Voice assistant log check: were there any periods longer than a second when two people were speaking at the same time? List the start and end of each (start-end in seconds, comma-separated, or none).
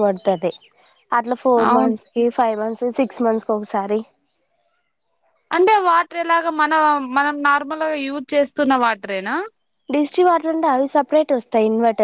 none